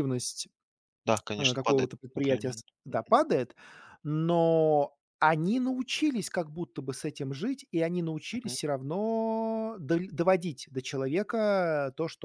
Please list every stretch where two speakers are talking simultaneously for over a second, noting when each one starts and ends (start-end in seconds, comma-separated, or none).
1.4-3.0